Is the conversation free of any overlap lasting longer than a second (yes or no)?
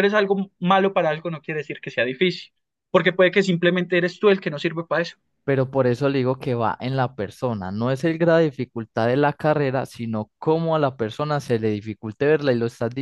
yes